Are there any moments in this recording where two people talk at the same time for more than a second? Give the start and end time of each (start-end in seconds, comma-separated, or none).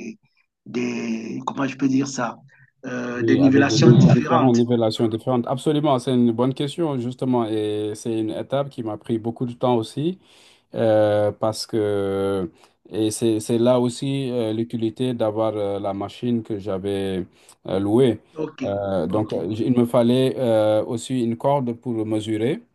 3.1-4.6